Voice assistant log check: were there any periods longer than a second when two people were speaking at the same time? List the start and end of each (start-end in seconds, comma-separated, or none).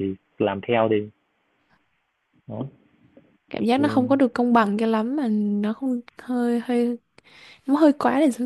none